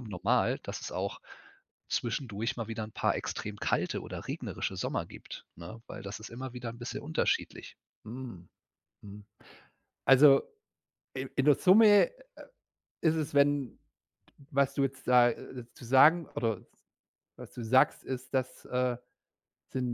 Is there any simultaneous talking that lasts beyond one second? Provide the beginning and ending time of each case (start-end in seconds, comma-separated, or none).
none